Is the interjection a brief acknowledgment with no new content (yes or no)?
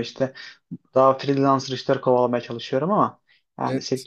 yes